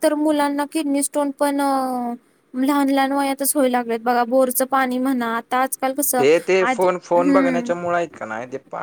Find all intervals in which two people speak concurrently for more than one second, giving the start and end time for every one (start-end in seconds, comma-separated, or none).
6.6-8.0